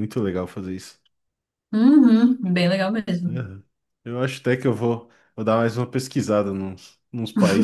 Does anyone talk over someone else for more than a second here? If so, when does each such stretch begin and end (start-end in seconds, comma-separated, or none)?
none